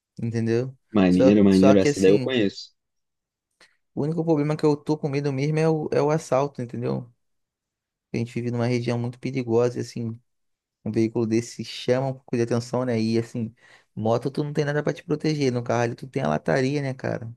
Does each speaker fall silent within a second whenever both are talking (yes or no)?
no